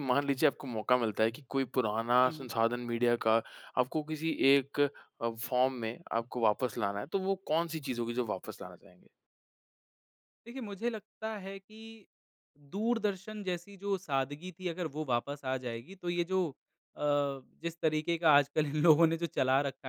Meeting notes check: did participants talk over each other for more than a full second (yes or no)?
no